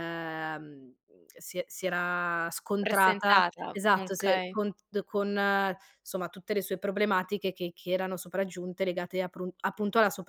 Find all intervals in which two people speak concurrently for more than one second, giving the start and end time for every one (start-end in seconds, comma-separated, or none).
2.8-4.6